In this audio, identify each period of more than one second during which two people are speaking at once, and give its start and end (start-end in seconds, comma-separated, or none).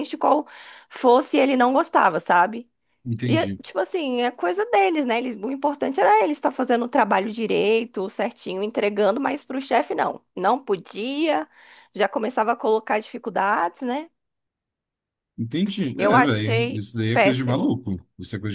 16.0-17.8